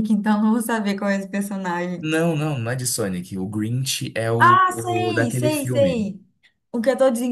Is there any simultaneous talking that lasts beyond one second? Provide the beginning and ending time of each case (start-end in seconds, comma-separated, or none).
4.4-6.1